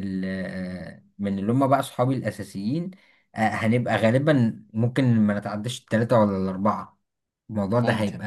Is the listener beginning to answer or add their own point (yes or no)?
no